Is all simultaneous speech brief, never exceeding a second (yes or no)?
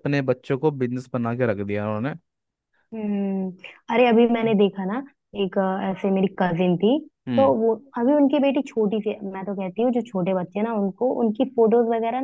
yes